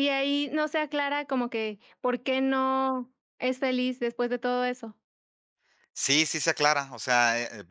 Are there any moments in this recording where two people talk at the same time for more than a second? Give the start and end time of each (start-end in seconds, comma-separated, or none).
none